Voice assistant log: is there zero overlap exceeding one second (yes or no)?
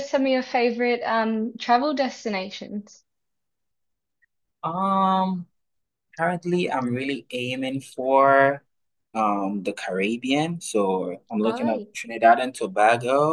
yes